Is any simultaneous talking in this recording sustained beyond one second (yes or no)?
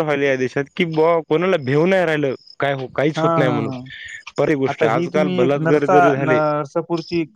yes